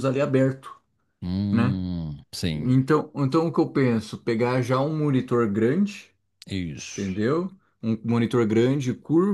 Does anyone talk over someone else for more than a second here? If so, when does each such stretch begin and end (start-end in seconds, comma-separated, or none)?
none